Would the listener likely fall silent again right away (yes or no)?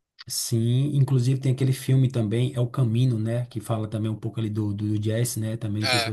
no